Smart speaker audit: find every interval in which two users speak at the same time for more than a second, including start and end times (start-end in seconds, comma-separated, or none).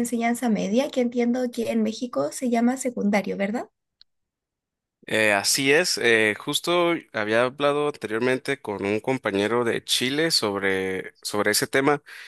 none